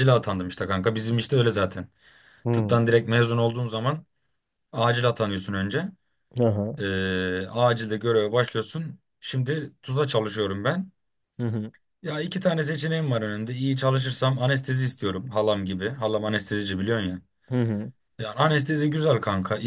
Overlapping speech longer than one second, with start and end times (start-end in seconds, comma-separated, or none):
none